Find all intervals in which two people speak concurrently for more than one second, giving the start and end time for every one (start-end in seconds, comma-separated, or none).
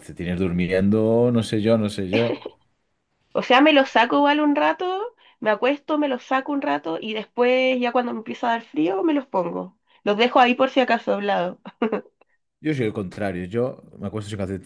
none